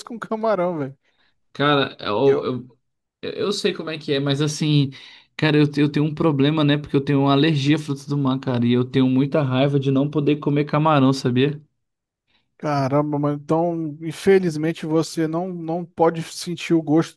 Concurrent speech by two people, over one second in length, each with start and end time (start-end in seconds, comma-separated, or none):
none